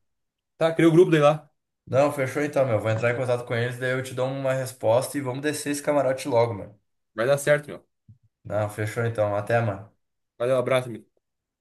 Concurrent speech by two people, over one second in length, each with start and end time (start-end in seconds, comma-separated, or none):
none